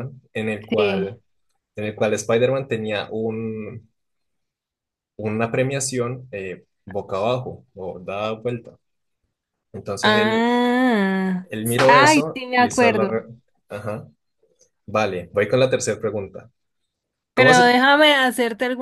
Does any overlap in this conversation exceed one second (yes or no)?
yes